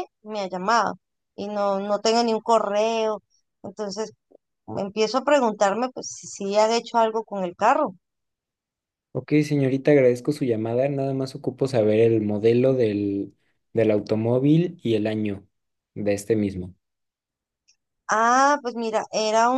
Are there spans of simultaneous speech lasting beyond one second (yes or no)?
no